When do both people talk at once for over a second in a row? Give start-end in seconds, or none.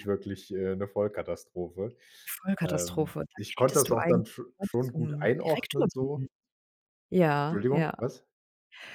2.6-6.3